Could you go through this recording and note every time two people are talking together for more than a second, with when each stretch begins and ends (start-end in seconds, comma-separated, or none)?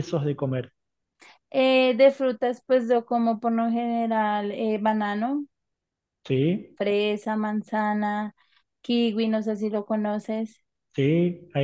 none